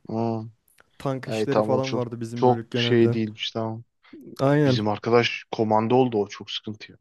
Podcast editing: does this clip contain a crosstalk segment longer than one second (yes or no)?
yes